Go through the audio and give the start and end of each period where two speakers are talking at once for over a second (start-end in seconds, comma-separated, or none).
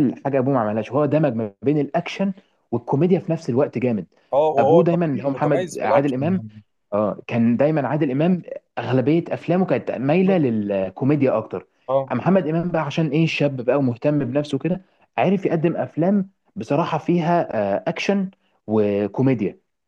4.6-6.4